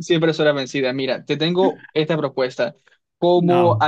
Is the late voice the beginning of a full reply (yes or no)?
no